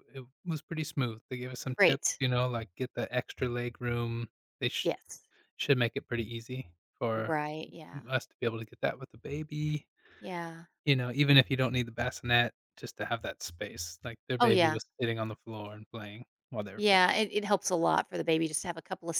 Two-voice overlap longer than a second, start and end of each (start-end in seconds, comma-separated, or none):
none